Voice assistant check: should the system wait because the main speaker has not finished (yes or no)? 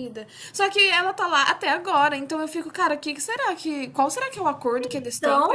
yes